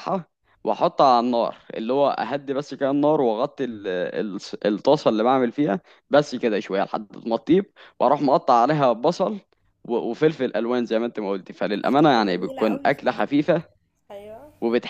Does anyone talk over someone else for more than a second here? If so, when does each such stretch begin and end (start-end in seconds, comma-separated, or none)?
11.8-13.3